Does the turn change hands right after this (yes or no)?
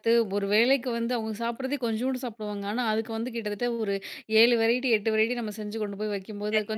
yes